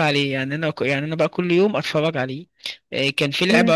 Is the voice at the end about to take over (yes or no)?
no